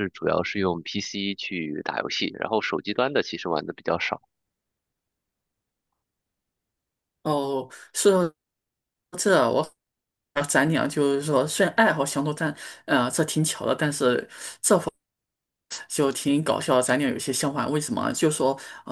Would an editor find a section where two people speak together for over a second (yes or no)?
no